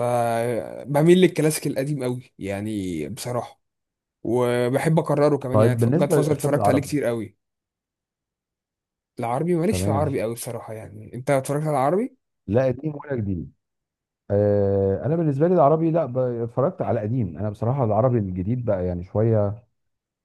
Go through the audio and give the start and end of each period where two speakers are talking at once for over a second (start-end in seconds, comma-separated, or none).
5.5-6.9